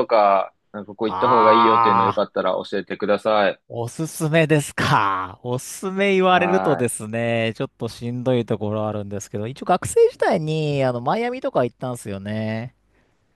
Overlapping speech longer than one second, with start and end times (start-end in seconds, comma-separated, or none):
1.0-2.4